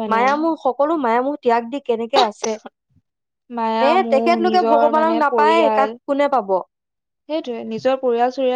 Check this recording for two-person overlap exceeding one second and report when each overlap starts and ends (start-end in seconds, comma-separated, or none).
3.8-5.9